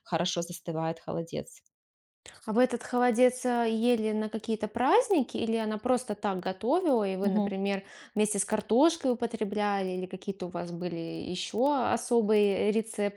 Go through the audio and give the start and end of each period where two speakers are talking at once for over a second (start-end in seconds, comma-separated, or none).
none